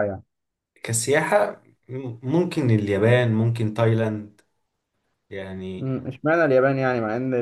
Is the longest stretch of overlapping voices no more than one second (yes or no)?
yes